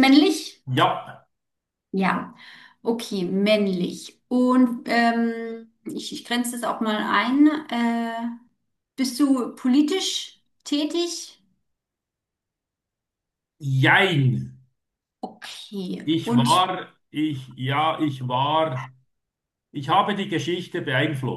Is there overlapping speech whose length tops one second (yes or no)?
no